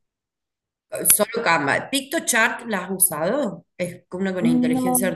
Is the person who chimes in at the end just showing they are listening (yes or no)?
yes